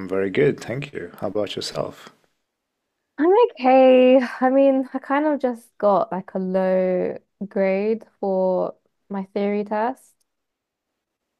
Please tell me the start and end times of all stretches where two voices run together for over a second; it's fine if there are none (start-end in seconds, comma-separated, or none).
none